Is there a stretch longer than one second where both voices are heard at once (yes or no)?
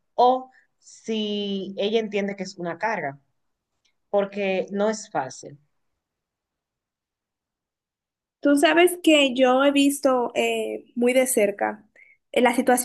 no